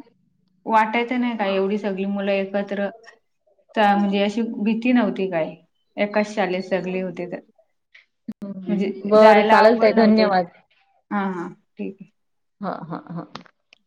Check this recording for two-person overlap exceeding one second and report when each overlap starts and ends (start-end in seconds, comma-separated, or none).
8.7-10.3